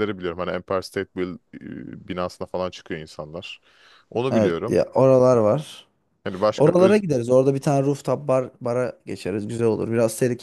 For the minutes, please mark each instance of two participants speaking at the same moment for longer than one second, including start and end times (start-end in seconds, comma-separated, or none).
none